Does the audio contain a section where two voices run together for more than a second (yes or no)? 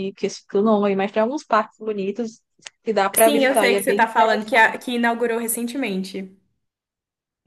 yes